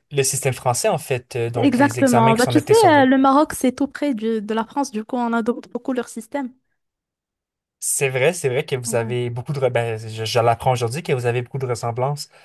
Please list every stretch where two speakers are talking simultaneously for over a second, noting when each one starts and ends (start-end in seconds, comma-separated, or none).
1.6-3.1